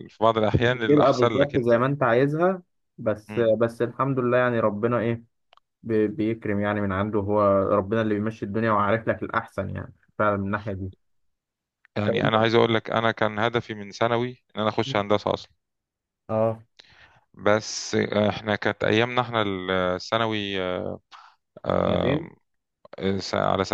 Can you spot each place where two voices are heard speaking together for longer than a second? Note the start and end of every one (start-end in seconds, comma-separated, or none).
0.6-1.8